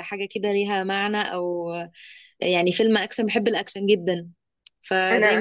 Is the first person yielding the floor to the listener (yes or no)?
no